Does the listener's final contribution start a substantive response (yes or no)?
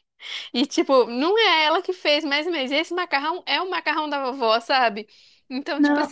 no